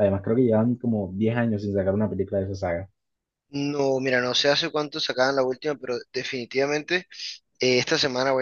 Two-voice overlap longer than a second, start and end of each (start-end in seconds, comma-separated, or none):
none